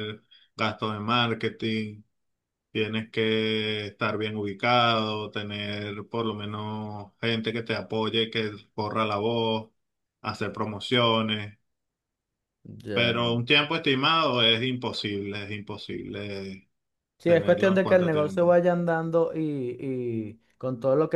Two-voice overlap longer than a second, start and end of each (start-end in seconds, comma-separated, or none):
17.2-18.6